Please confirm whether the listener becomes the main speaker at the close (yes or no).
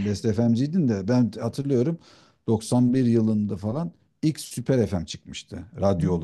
no